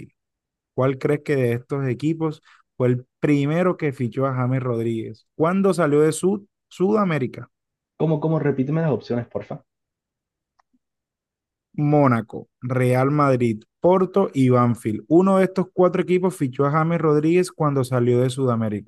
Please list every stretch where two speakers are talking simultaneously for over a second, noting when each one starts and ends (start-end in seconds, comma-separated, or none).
none